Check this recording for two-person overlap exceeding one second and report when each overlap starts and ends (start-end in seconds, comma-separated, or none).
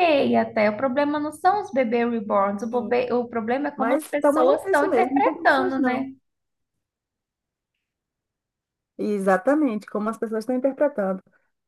3.8-6.0